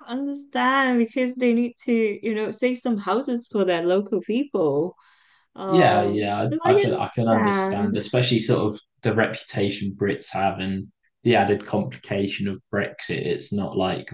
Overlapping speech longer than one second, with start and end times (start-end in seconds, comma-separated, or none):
5.7-8.0